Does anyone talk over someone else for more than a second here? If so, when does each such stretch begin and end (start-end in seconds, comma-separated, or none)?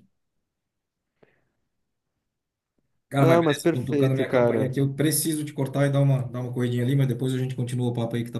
3.2-4.7